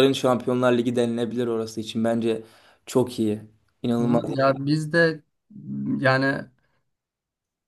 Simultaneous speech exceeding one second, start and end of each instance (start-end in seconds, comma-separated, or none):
none